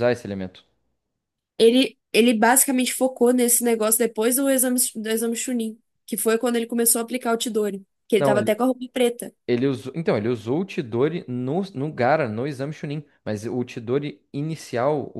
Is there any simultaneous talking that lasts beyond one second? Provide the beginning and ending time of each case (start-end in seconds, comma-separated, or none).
none